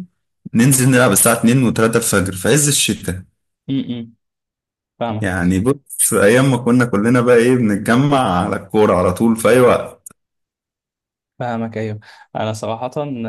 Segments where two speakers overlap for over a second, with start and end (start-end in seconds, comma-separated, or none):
none